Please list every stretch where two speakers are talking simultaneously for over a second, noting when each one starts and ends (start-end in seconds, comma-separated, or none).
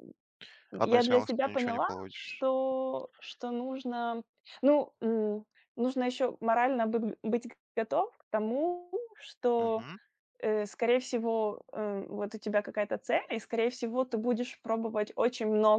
0.8-2.5